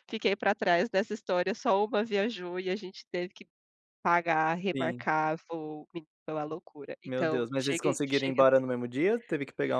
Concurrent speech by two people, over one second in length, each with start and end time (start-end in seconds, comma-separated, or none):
7.0-8.7